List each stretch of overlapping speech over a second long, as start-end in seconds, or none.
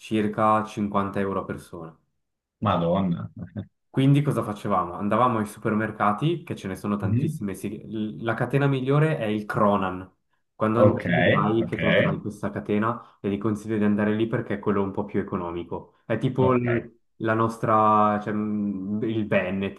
none